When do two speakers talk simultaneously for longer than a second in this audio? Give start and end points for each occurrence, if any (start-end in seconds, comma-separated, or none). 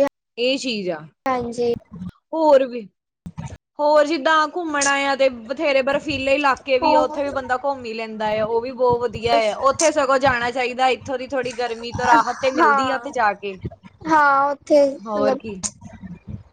none